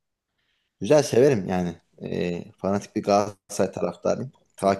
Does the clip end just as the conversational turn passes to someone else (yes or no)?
yes